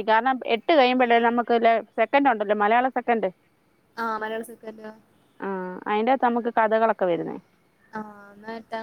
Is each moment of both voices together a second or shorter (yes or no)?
yes